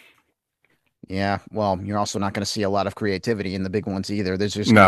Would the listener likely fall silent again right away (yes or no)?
yes